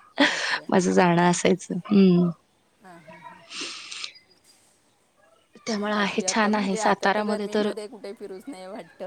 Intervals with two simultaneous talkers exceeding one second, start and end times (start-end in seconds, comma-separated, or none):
5.9-7.5